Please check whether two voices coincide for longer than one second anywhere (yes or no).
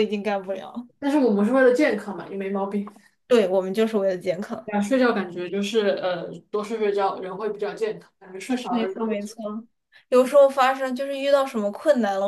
no